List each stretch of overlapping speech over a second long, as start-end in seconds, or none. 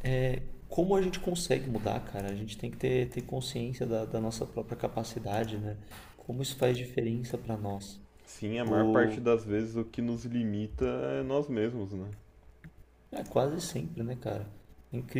none